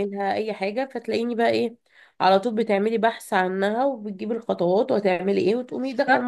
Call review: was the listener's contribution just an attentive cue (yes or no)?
no